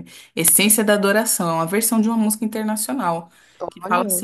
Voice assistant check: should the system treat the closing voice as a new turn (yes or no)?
no